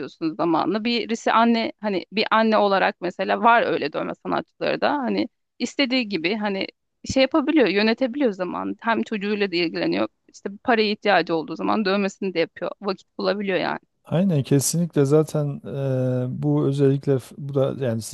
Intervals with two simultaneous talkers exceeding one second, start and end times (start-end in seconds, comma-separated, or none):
none